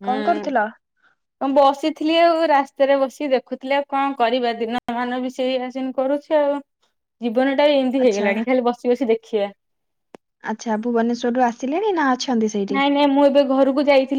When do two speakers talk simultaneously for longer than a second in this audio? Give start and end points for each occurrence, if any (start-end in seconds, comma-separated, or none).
none